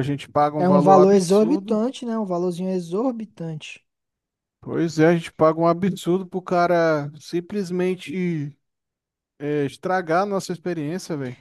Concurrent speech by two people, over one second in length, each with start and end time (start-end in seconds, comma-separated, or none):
0.6-1.8